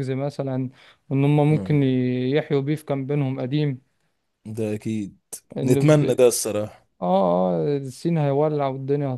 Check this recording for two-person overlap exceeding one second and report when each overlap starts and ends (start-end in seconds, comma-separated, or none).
none